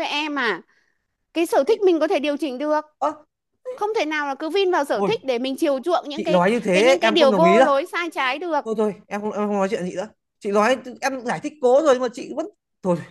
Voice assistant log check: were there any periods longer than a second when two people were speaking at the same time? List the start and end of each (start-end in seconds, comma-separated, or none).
6.2-7.7